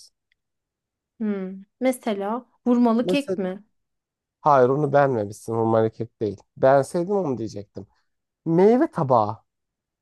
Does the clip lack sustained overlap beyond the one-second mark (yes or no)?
yes